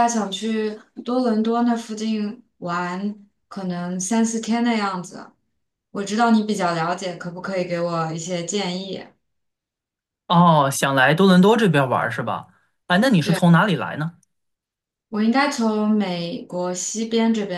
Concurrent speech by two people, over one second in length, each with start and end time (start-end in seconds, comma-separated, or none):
none